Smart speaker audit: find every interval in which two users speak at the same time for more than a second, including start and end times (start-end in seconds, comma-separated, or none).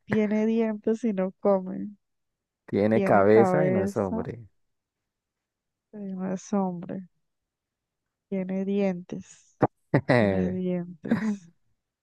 2.9-4.3